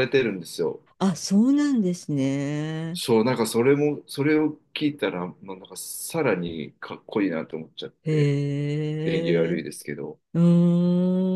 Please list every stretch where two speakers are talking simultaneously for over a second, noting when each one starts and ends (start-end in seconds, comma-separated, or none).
none